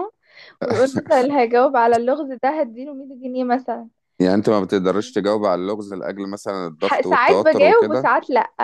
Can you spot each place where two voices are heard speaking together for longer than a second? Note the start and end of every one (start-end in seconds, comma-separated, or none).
6.8-8.1